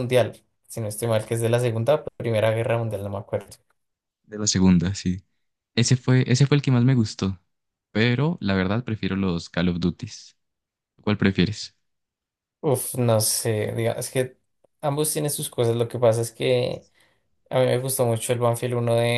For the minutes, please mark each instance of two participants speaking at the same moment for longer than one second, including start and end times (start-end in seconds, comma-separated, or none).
none